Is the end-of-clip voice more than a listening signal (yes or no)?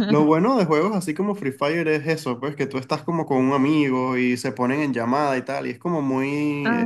no